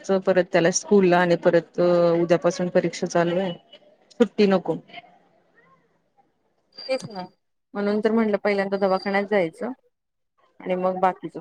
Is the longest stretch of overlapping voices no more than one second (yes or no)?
yes